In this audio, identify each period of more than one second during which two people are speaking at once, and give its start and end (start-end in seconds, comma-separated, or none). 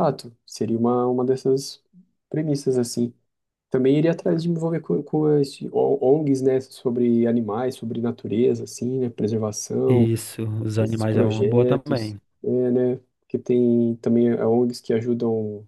10.8-12.2